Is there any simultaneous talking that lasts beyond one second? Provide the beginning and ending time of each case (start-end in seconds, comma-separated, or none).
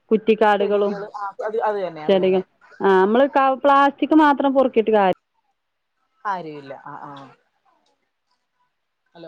none